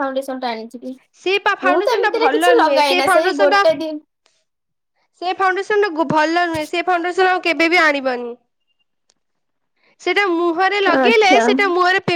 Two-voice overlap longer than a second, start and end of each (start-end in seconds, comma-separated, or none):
1.7-3.6